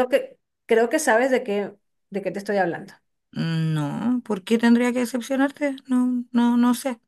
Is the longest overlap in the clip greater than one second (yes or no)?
no